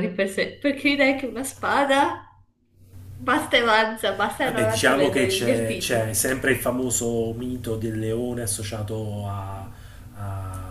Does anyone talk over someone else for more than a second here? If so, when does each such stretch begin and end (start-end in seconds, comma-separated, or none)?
4.4-6.1